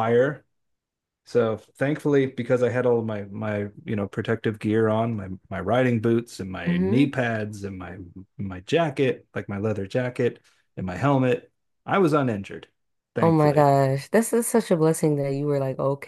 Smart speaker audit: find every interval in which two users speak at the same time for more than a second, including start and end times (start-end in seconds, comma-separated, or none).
none